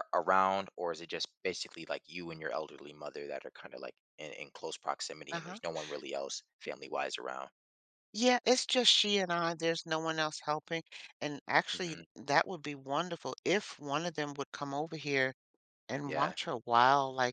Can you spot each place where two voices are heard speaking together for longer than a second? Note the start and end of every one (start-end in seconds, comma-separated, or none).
none